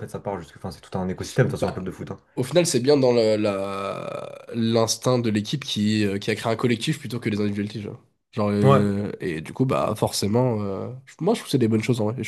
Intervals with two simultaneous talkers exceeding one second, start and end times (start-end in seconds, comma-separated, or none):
none